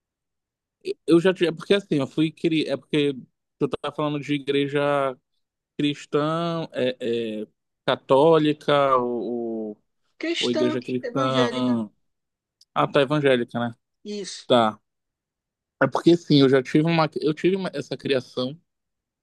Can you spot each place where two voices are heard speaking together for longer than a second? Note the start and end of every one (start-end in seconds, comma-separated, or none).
10.4-11.8